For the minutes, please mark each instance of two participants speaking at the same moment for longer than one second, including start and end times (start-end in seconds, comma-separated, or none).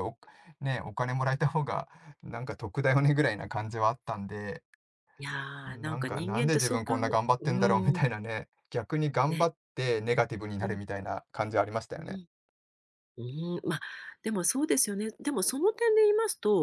5.7-8.1